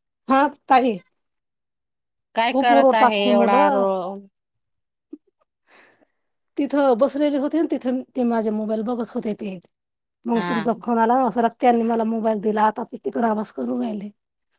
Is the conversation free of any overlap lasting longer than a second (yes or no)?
no